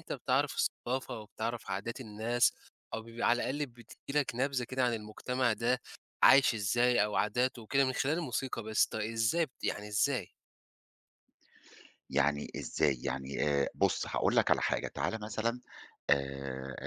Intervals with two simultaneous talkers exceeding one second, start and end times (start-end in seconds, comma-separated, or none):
none